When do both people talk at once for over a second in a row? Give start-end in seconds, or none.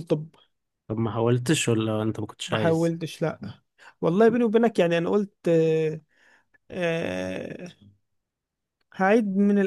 none